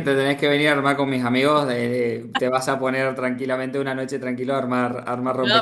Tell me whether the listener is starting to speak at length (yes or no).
yes